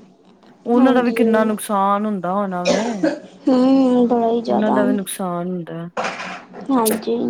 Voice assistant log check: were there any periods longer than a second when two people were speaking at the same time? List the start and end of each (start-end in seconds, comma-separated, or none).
none